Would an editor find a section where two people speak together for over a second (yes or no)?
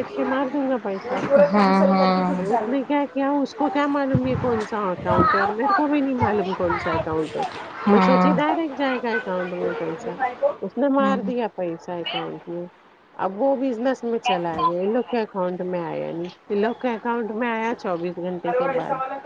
no